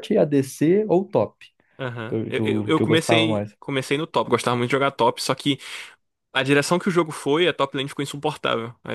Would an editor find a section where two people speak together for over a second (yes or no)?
yes